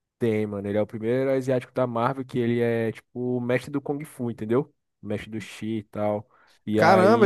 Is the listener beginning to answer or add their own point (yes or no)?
yes